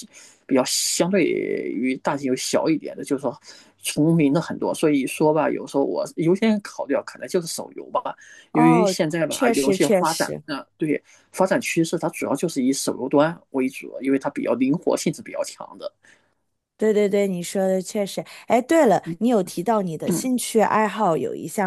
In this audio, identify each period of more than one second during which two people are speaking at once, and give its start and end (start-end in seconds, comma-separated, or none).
8.5-10.4